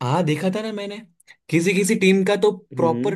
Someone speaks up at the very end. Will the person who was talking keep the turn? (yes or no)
yes